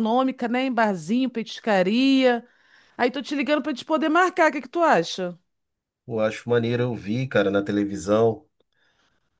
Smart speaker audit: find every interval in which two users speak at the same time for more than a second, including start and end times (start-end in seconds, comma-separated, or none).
none